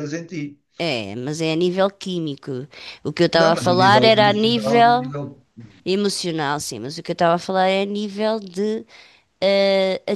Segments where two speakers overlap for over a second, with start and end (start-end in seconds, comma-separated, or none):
3.3-5.1